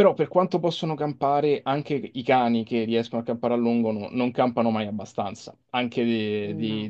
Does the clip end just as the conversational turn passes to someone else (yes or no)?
no